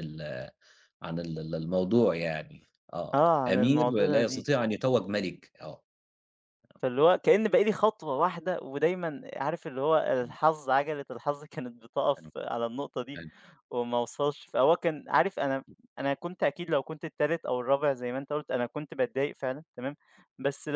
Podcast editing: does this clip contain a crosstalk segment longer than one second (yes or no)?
yes